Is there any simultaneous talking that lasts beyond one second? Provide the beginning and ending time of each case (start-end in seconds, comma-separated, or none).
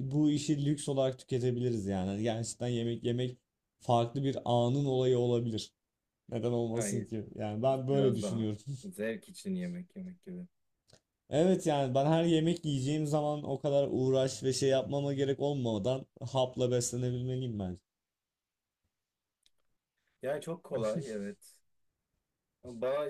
none